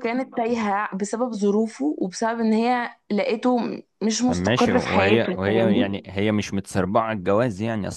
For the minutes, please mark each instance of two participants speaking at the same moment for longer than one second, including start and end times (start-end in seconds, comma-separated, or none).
4.2-6.0